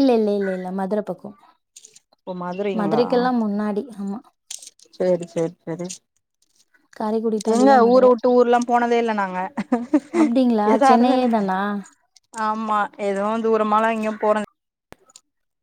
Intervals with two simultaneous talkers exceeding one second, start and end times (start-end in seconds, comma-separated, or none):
none